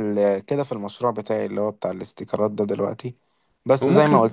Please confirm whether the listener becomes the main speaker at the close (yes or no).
no